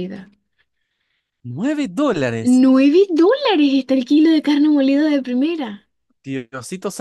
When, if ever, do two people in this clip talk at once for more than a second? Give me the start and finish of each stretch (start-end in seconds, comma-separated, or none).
none